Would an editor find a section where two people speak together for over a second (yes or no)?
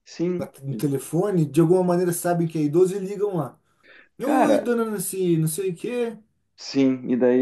no